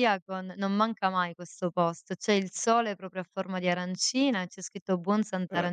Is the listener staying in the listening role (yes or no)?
yes